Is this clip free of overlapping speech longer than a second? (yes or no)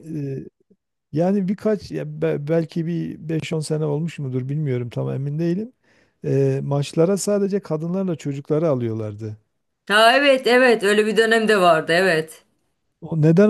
yes